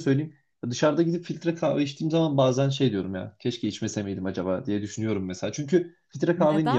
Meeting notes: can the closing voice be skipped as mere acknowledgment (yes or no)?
yes